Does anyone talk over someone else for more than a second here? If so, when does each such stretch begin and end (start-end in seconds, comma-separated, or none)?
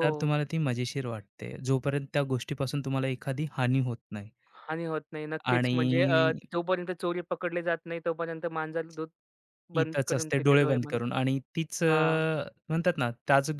9.8-11.2